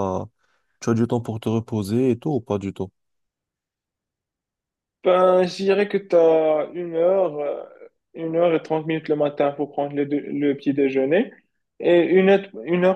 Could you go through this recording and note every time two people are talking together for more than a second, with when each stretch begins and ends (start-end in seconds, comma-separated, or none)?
none